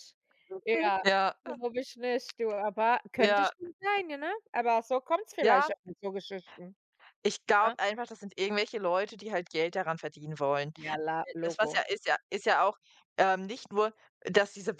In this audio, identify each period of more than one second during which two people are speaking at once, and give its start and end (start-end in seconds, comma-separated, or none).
none